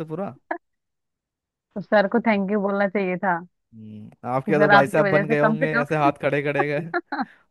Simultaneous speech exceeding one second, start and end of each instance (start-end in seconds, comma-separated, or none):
4.5-6.0